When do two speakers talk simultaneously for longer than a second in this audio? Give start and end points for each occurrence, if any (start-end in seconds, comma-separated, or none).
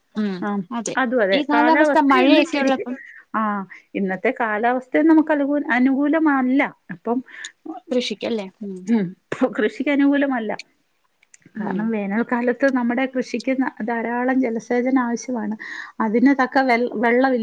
1.4-2.9